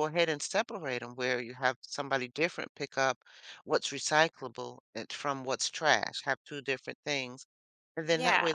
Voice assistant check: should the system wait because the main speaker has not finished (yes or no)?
yes